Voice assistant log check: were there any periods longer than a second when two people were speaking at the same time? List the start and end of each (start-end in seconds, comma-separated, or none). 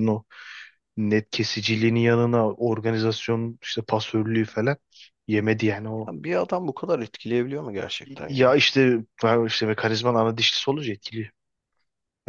none